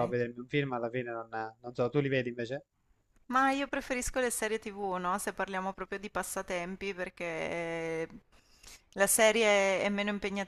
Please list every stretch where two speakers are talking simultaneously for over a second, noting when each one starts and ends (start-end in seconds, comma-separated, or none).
none